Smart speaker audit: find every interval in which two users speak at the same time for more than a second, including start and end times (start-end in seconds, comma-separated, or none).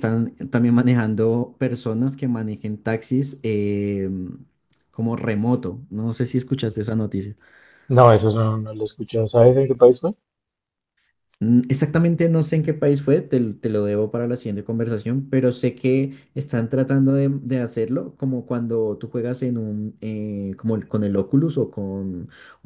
none